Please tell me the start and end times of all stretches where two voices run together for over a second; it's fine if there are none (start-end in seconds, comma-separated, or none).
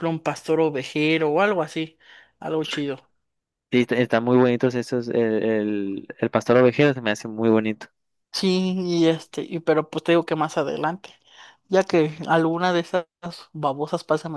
none